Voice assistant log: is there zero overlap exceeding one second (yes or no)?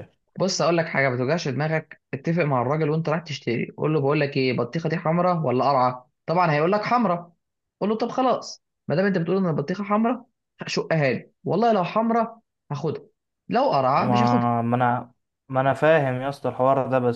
yes